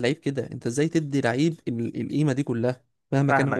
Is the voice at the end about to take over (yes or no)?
yes